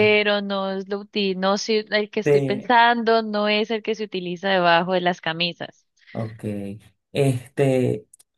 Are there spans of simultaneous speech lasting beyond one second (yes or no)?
no